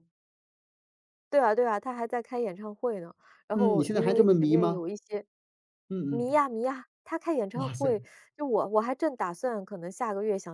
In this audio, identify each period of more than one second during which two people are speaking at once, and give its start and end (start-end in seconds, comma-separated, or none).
3.5-4.8